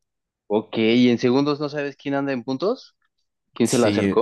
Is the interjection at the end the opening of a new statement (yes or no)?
yes